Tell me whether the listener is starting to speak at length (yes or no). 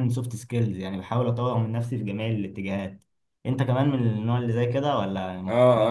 yes